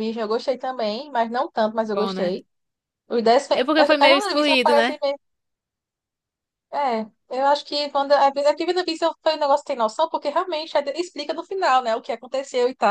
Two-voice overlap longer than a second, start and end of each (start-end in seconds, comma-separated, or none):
3.6-5.0